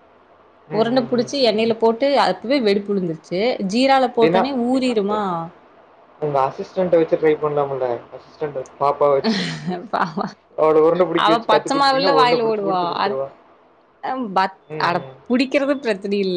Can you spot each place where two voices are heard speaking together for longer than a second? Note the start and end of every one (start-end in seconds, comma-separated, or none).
11.2-13.1